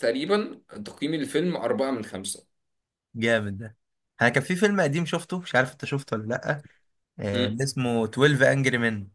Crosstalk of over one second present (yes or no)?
no